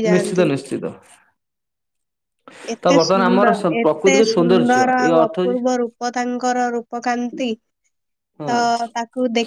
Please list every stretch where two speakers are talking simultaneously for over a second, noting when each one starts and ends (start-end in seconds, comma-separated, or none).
3.3-5.6